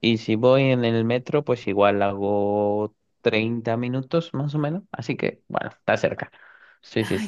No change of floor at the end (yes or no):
no